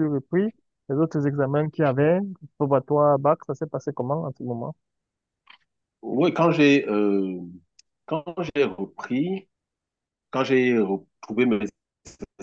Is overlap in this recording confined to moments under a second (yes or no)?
yes